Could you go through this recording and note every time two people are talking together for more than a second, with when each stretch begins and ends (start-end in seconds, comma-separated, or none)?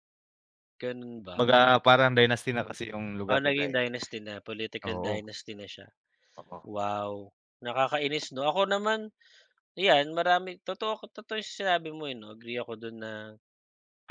none